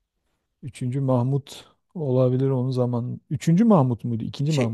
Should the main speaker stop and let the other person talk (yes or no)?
yes